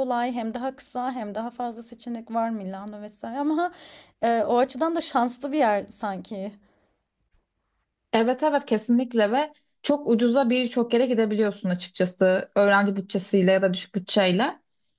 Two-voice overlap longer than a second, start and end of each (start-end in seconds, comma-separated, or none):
none